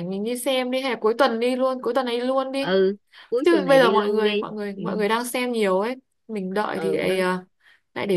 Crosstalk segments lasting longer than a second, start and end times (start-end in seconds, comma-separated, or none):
3.4-4.8